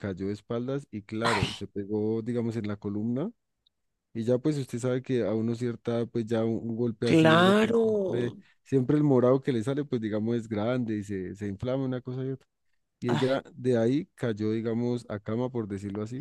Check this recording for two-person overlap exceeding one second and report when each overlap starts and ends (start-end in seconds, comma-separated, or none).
7.0-8.4